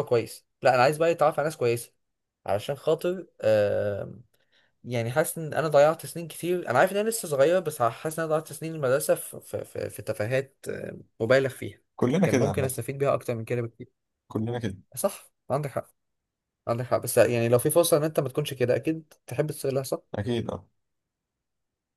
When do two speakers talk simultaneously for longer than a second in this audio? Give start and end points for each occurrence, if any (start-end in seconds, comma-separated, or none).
none